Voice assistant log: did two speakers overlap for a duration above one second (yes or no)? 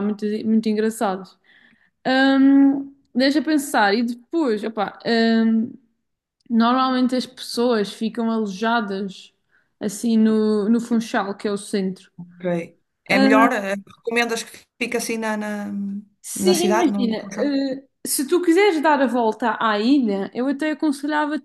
yes